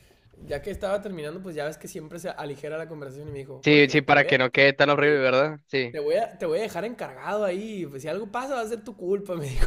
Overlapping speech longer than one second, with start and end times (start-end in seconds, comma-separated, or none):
3.6-5.2